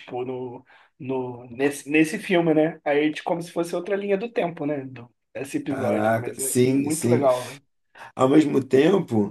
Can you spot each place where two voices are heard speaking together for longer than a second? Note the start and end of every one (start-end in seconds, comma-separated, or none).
5.7-7.3